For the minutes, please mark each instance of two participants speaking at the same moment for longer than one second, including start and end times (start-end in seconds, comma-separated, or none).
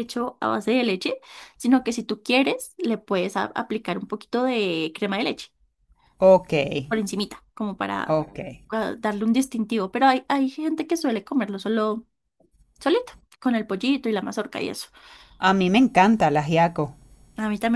none